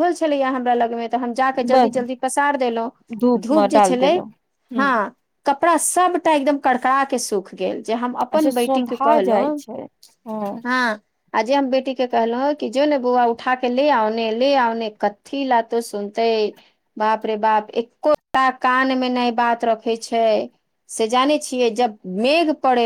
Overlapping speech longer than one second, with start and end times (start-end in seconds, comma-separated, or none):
8.4-9.6